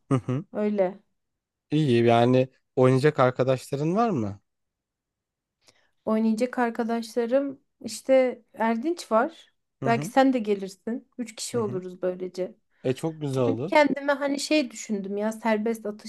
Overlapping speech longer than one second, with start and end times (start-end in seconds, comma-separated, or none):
none